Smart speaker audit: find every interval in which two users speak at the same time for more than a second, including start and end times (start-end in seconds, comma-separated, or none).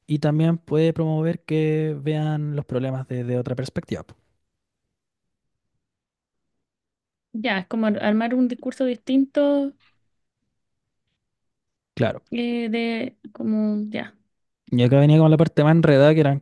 none